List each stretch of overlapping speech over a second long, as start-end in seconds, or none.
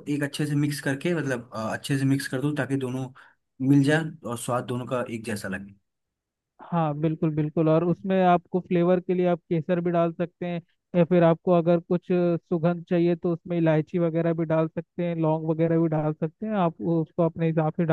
none